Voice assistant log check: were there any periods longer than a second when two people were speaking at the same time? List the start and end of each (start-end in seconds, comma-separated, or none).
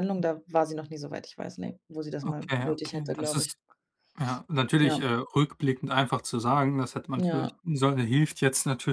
2.2-3.6